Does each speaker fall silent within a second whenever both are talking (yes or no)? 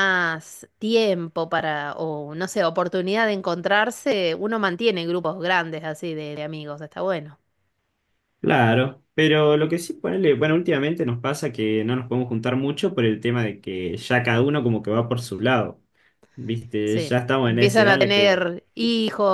no